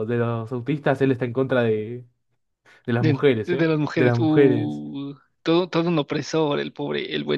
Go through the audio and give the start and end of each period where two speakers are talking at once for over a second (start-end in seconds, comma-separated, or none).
3.0-4.8